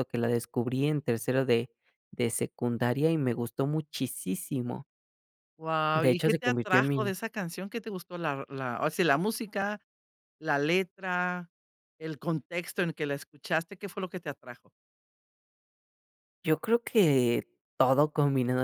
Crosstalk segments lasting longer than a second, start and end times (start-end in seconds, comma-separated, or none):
5.9-7.1